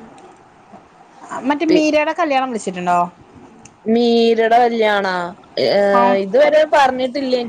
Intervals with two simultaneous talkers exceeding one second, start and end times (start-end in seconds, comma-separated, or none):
none